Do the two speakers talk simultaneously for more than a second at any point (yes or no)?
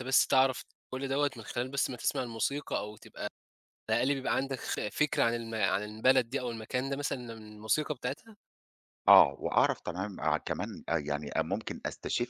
no